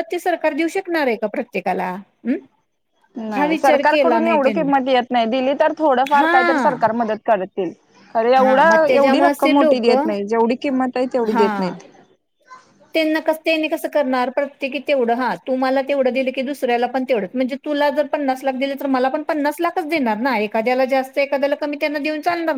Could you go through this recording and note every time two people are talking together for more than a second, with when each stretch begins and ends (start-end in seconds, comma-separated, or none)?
3.4-4.7, 8.4-9.9